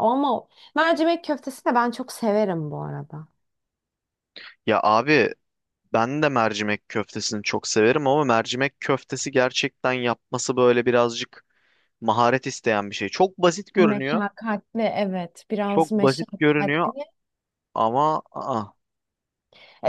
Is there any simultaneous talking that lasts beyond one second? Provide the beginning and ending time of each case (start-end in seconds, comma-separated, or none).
15.7-16.9